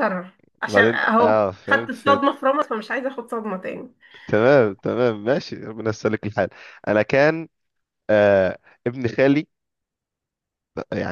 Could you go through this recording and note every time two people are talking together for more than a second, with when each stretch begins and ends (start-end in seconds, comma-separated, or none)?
0.7-2.2